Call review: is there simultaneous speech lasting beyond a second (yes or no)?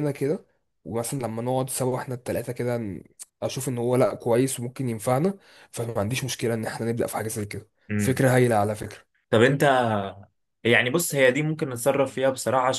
no